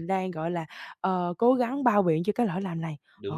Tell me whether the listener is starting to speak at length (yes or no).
yes